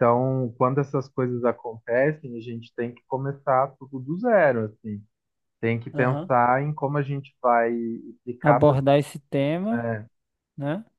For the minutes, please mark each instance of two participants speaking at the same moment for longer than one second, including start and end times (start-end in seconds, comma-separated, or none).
none